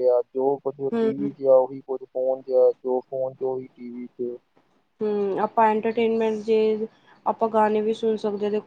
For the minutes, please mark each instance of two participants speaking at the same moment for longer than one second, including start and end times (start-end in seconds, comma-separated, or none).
none